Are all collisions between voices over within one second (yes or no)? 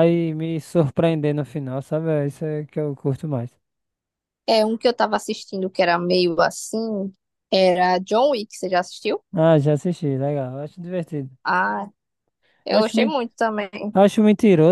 yes